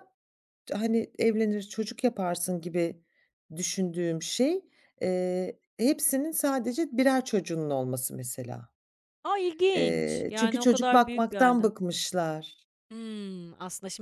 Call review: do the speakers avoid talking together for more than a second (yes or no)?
no